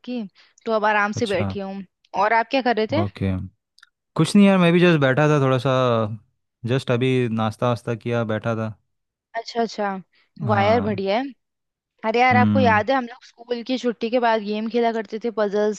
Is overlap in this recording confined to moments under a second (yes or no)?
yes